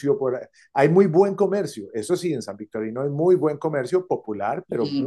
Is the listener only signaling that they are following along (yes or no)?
yes